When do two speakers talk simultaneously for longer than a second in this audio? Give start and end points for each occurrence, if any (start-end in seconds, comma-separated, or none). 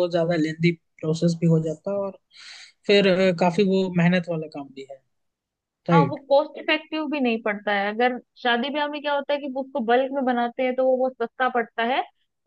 none